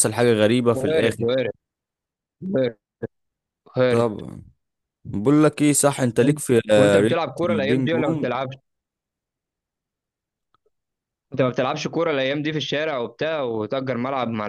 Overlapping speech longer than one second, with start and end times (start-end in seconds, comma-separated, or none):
6.8-8.3